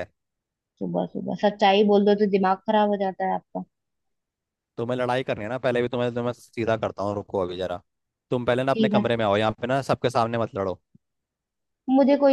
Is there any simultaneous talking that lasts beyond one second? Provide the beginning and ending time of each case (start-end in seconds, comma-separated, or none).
none